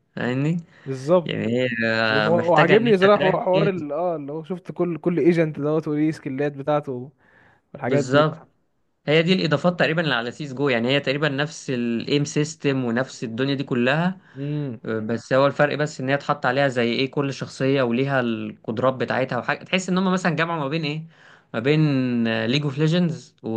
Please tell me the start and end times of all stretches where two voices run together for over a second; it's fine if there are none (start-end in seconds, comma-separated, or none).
2.1-3.8